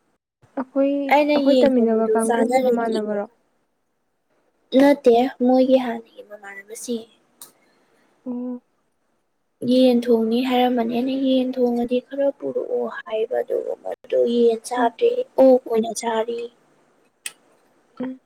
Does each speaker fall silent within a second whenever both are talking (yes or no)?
no